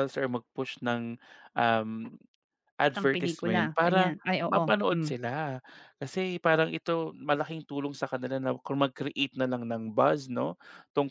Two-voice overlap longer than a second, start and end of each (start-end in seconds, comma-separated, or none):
2.9-5.1